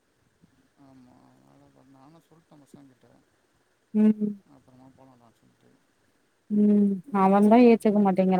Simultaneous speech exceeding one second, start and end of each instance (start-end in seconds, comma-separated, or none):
none